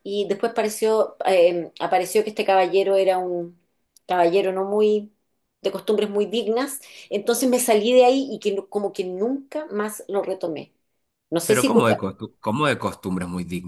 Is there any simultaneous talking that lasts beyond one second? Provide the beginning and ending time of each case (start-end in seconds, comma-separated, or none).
none